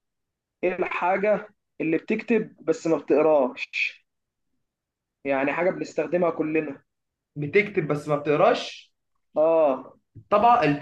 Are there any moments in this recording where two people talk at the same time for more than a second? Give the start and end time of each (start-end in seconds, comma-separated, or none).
none